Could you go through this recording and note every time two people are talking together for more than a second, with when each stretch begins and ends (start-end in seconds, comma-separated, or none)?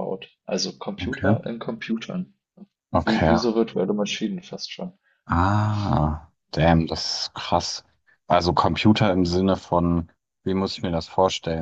none